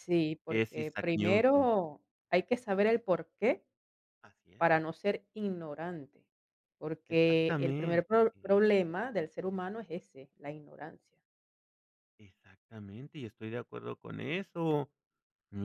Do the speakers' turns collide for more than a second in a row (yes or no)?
yes